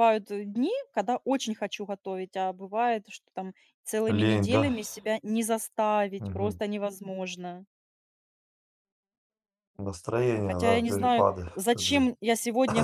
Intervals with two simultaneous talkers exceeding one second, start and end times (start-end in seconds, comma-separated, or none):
10.3-12.1